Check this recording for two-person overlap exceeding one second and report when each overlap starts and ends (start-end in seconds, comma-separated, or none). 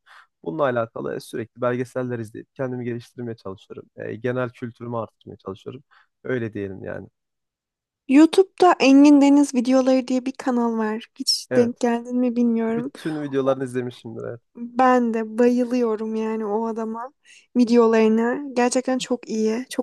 none